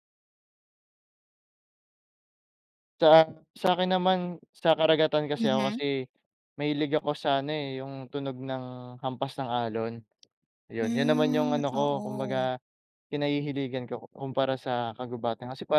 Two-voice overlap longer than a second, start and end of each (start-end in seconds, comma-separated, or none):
10.8-12.5